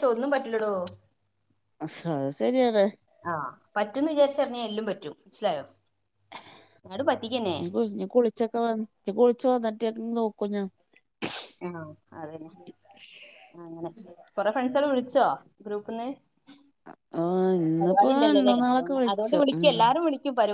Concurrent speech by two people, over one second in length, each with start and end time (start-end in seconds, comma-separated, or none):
17.8-19.6